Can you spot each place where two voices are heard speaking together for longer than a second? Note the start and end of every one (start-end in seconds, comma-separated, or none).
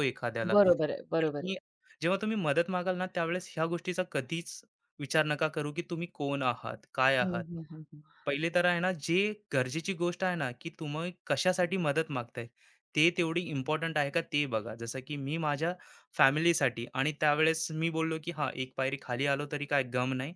none